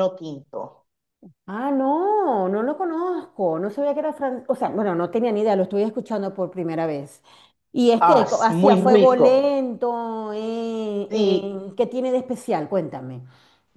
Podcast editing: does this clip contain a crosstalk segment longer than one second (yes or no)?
yes